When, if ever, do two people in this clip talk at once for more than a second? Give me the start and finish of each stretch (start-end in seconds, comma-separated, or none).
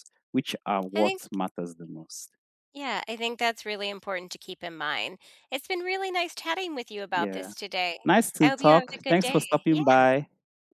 8.4-10.1